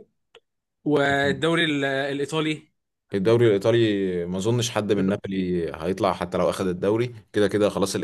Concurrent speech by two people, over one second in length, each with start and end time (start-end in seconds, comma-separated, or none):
none